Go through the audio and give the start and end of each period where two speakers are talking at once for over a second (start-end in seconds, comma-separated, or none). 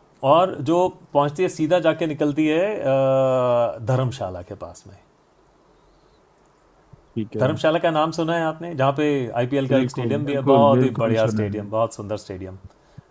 9.7-11.7